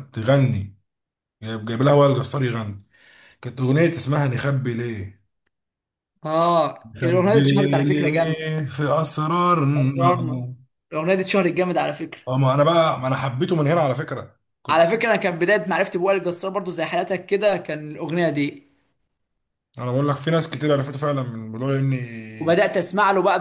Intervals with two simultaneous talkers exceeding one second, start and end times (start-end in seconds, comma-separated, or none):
6.9-8.5